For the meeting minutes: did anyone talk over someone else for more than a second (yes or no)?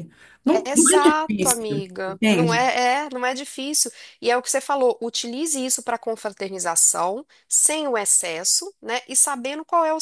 yes